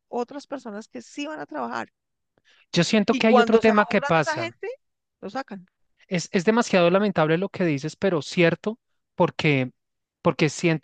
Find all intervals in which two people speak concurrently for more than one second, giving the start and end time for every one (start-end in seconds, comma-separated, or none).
3.1-4.5